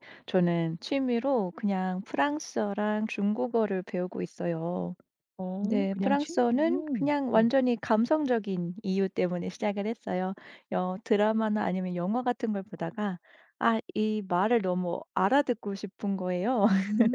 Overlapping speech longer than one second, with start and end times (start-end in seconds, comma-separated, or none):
5.6-7.5